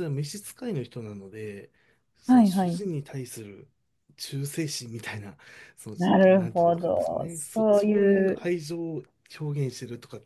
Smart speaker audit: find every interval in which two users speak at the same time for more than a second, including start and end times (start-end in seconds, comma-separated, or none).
6.3-8.4